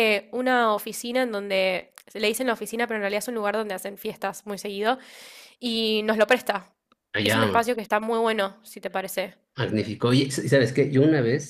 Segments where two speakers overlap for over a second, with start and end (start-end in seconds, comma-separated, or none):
none